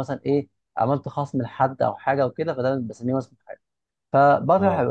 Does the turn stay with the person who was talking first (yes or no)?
yes